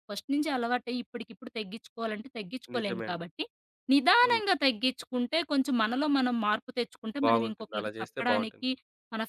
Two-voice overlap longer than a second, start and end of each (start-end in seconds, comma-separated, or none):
7.2-8.7